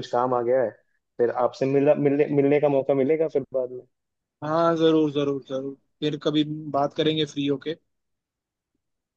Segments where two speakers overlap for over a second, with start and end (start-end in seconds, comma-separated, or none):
none